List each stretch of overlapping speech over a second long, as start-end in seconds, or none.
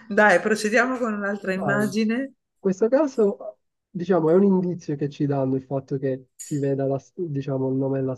none